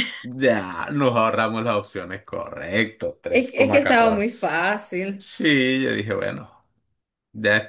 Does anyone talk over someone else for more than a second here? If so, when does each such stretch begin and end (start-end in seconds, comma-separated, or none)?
3.3-4.5